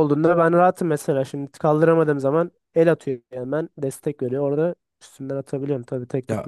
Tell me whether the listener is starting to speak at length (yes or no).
yes